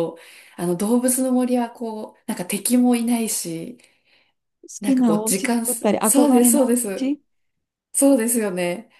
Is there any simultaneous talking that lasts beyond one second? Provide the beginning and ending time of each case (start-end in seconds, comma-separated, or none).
4.8-7.1